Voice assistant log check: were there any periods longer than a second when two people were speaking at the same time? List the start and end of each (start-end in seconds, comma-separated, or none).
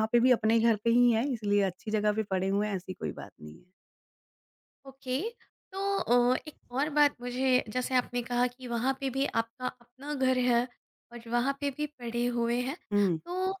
none